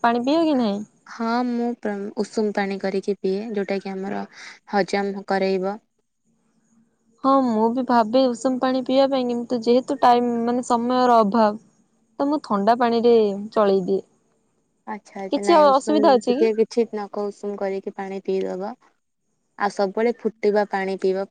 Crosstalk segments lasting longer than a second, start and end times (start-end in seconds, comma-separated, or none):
none